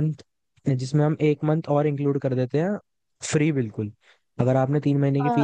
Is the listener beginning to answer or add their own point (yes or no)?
no